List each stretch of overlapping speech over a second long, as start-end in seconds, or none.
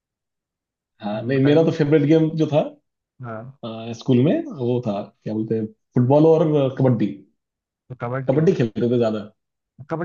none